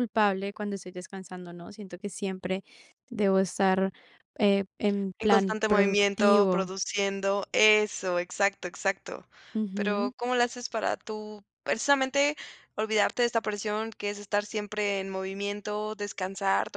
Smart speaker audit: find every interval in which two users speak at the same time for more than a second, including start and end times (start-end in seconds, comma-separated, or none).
5.2-6.7